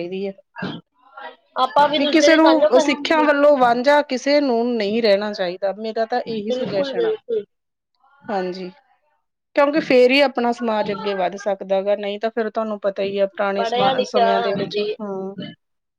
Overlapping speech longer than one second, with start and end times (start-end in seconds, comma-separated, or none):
2.0-3.2